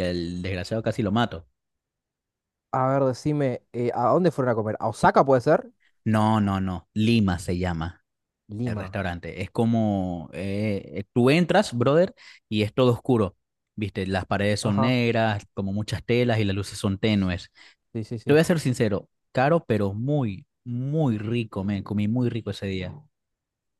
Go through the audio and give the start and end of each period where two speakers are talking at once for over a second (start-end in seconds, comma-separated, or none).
none